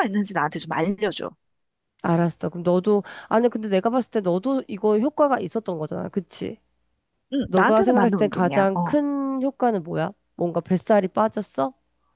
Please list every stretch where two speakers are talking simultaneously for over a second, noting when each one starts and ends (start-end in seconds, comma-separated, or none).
7.5-9.0